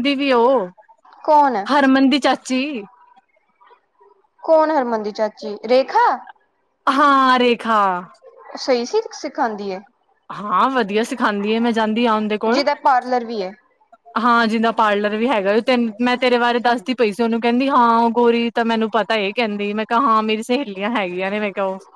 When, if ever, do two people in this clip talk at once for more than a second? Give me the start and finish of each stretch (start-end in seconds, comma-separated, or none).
none